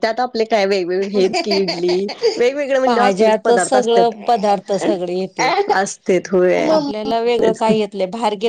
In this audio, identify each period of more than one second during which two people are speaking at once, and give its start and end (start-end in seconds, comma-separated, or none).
2.9-4.1